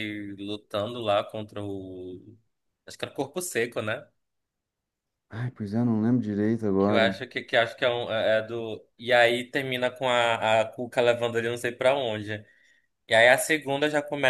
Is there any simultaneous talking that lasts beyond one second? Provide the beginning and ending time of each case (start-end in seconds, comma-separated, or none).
none